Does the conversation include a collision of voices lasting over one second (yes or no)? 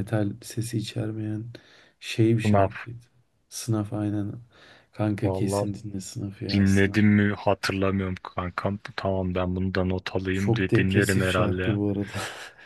yes